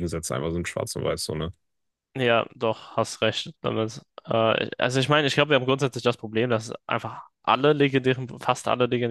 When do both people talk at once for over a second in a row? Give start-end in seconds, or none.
none